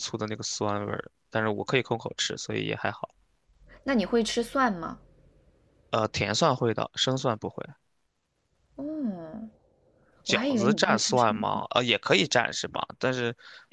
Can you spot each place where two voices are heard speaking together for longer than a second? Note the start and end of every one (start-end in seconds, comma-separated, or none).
10.3-11.6